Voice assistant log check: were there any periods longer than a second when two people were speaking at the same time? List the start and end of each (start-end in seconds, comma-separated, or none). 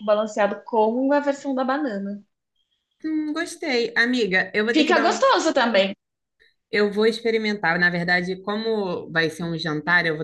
none